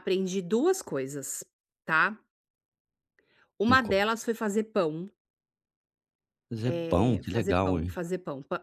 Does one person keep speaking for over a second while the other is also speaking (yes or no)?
yes